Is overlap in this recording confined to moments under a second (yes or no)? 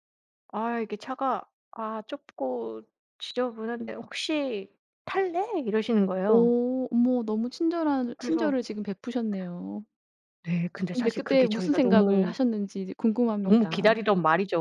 no